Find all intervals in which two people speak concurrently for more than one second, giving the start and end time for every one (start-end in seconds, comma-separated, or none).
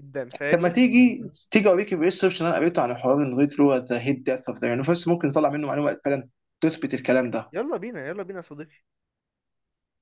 none